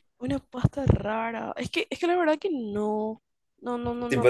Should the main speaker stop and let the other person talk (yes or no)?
yes